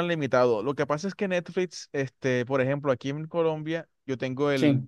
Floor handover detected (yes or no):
no